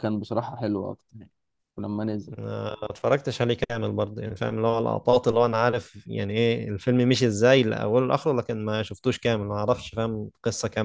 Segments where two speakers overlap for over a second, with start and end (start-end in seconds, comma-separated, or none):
none